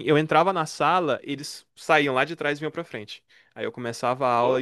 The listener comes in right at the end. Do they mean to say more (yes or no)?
no